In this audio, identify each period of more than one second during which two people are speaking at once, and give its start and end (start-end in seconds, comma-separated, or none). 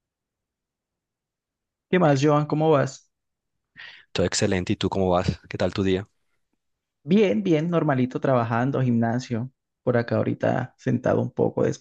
none